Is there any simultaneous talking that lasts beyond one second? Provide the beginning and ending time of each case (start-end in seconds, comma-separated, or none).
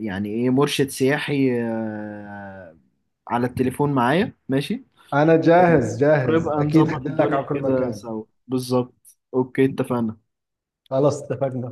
6.2-8.1